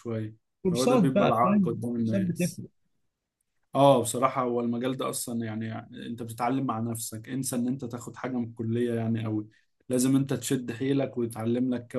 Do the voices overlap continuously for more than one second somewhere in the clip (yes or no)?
yes